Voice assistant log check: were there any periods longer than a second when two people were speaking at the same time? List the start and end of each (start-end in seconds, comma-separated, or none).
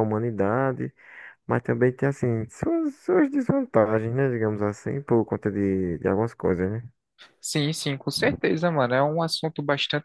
none